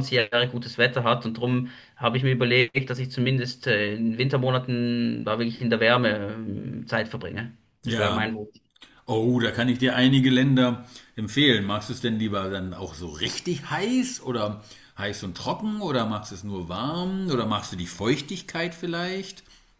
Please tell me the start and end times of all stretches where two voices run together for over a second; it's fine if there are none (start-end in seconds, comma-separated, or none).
none